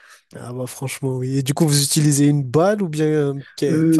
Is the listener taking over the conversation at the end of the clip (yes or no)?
yes